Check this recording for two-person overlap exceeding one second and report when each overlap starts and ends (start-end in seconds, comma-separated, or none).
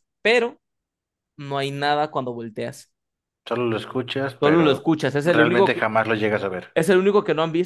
4.4-5.7